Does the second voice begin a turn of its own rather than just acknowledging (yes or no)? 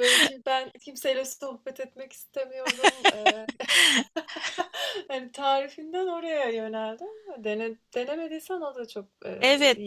yes